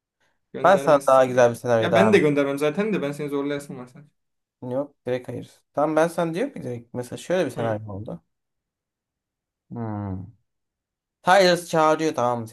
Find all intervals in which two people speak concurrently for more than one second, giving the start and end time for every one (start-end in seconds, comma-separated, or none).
0.6-2.2